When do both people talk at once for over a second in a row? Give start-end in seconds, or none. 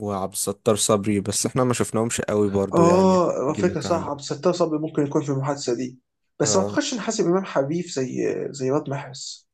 2.7-4.1